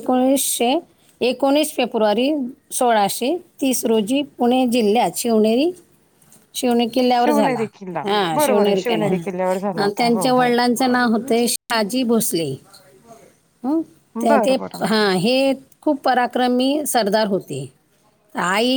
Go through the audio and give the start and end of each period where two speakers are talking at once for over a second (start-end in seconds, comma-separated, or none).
8.4-10.5